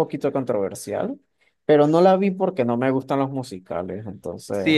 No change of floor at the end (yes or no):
no